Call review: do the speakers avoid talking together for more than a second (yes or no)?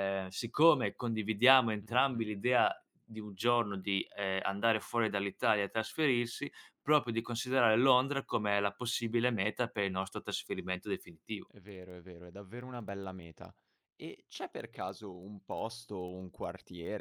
yes